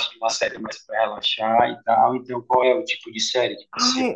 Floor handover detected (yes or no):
yes